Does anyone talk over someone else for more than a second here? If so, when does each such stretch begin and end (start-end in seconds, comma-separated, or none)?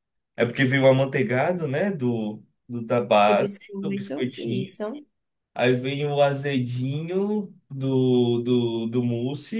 3.2-4.8